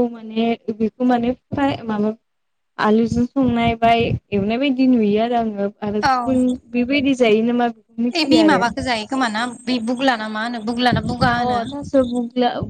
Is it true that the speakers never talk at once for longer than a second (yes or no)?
yes